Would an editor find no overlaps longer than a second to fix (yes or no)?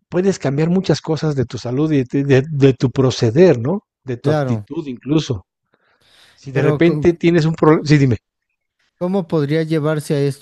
yes